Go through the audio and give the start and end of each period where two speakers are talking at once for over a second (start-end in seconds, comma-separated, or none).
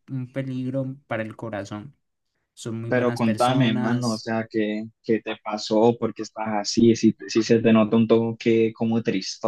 2.9-4.3